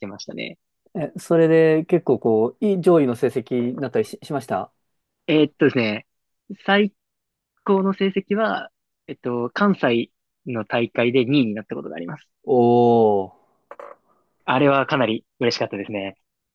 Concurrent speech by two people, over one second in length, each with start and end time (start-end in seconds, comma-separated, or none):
none